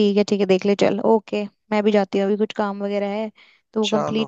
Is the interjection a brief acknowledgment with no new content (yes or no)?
yes